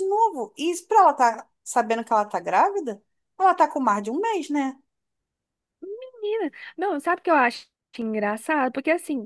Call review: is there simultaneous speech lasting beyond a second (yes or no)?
no